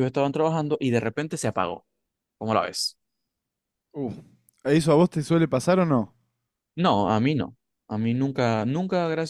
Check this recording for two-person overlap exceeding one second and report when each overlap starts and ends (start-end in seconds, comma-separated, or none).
none